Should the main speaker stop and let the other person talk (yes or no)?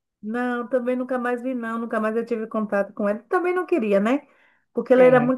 no